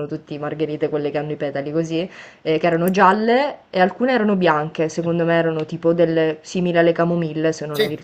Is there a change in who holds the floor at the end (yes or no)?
no